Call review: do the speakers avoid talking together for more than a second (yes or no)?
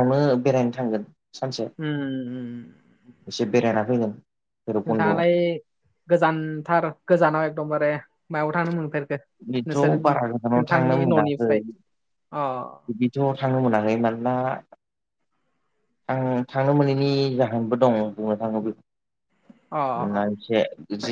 no